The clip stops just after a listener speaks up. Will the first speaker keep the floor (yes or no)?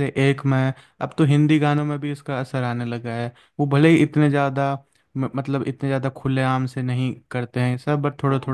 yes